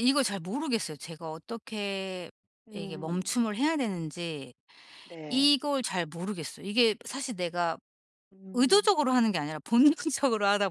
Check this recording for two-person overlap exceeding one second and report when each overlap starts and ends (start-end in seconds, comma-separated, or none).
none